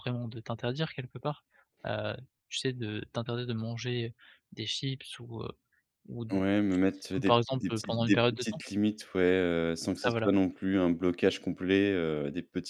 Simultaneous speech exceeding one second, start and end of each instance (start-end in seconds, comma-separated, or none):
6.7-8.6